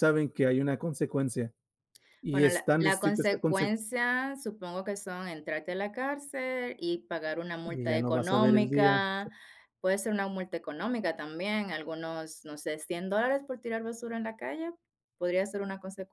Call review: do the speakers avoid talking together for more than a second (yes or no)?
no